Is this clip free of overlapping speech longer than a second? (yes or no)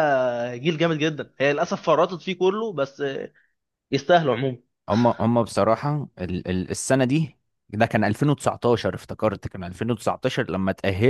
yes